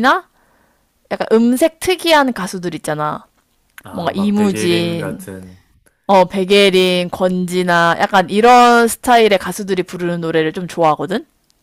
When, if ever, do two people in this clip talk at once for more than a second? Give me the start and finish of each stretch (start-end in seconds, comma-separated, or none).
3.9-5.2